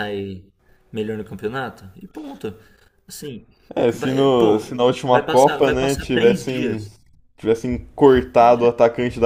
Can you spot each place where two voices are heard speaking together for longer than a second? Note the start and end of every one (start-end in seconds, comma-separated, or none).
3.9-6.8